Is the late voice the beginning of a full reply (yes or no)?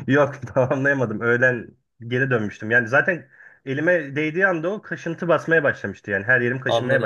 yes